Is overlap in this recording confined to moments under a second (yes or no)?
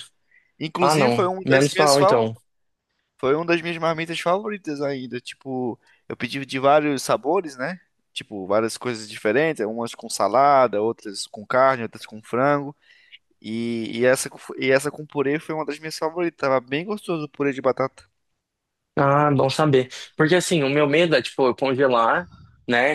no